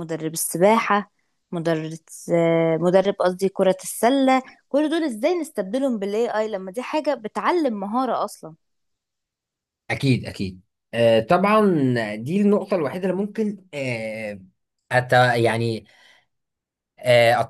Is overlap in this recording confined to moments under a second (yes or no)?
yes